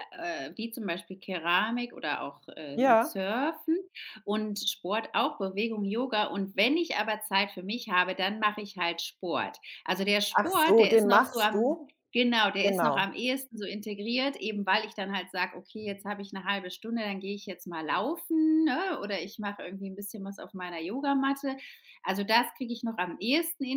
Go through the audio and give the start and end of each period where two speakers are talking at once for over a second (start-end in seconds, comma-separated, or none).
10.3-11.9